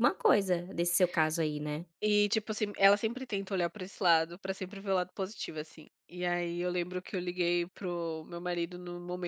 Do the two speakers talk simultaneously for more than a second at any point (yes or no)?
no